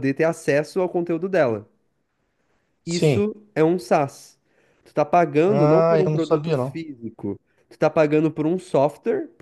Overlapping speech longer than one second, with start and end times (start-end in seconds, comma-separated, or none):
5.5-6.8